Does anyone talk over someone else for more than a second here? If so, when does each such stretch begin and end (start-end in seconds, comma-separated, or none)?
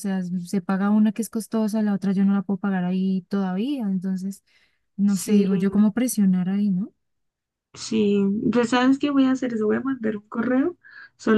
none